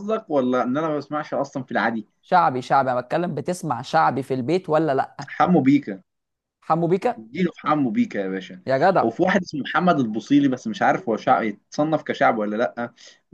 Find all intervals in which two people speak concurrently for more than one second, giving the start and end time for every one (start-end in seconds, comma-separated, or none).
none